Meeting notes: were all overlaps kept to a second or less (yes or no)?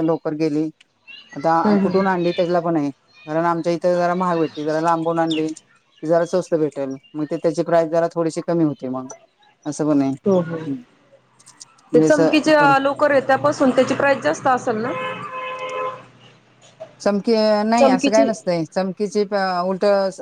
yes